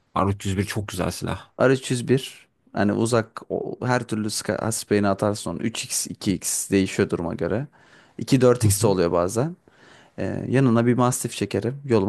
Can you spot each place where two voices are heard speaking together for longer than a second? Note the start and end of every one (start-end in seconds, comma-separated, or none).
none